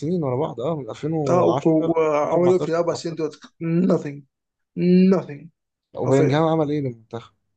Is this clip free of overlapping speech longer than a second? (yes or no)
no